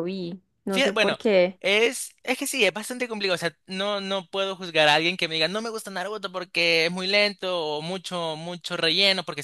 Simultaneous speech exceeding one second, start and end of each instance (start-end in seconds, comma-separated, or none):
none